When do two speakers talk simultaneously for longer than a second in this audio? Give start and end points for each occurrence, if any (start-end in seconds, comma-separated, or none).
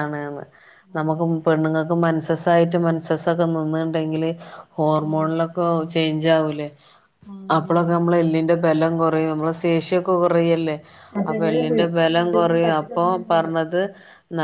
11.3-13.5